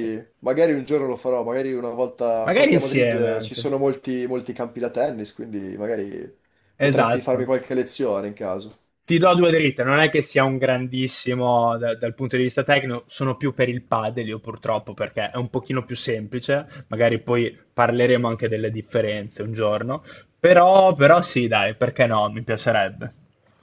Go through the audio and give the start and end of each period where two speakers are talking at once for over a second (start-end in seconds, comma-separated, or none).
2.4-3.7